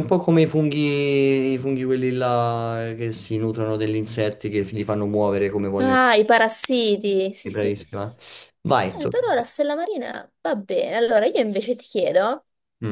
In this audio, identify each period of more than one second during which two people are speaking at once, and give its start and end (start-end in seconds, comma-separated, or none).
none